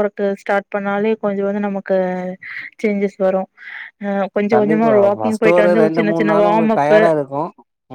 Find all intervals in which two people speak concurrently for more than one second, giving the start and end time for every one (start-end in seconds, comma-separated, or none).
4.5-7.0